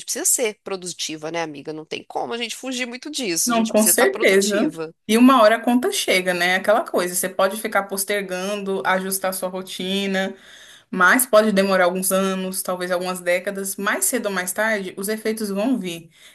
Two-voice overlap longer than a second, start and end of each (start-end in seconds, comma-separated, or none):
3.4-4.9